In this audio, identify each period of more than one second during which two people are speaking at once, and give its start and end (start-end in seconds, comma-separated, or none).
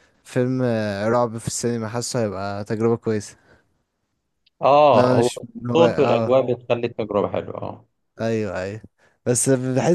4.9-6.4